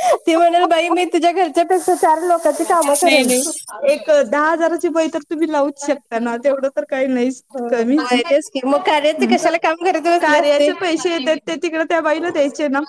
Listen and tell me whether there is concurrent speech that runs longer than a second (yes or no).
no